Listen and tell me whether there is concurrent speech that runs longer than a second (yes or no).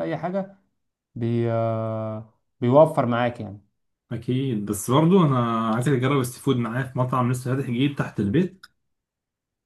no